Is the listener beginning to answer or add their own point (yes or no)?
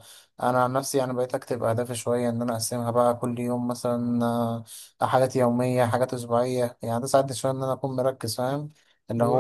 no